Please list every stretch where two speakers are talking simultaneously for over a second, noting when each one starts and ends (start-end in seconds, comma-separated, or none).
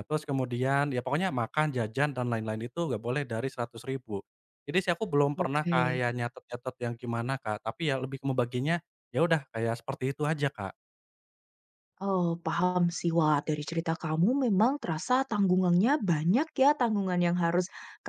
none